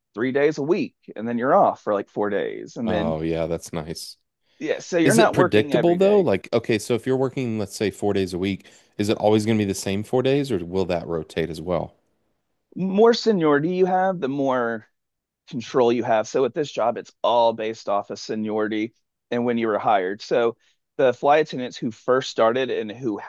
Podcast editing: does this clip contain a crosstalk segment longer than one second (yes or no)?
yes